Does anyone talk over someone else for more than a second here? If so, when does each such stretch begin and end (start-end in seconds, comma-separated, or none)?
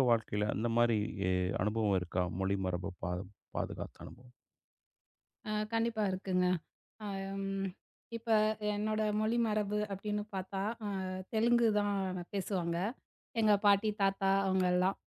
none